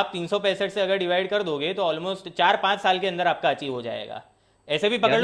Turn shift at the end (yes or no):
no